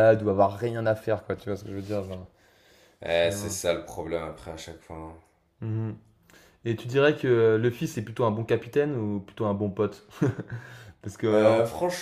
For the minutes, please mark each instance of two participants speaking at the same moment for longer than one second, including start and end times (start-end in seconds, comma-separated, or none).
none